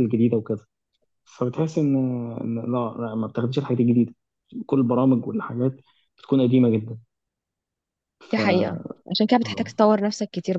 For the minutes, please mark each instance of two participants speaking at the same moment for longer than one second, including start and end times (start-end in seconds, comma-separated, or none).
none